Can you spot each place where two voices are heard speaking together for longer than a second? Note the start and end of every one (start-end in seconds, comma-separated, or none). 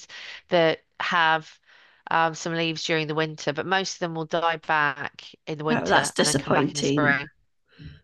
5.7-7.2